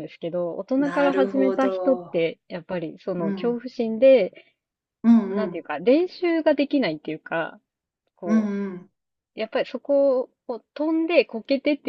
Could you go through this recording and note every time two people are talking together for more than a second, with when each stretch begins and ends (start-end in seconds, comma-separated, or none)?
0.8-2.2